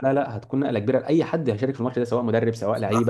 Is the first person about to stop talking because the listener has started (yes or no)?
no